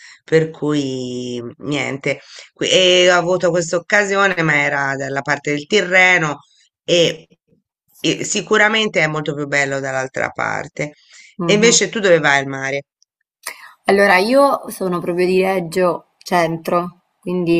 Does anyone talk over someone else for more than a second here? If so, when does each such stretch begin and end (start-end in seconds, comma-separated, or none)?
none